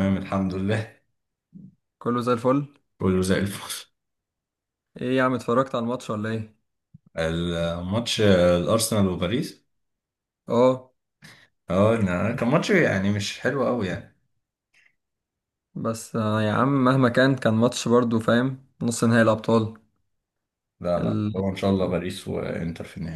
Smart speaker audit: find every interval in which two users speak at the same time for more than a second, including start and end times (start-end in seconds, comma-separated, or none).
none